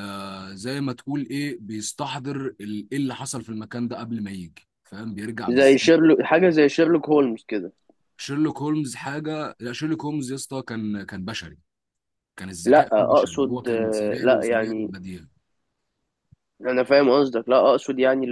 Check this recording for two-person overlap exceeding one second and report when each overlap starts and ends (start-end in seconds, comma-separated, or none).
12.6-14.9